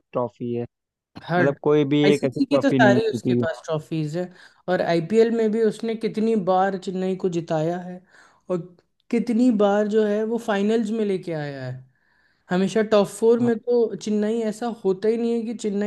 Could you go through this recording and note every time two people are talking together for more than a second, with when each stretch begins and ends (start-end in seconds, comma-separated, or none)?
2.1-3.4